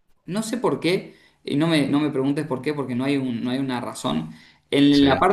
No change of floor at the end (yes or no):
yes